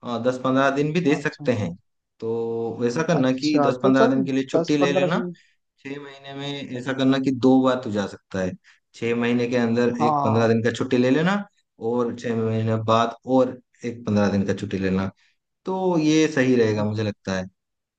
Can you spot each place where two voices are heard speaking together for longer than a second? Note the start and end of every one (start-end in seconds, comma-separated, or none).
3.2-5.2